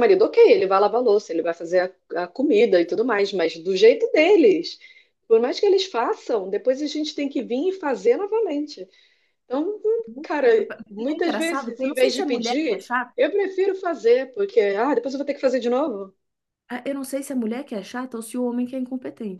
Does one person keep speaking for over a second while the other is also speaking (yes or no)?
yes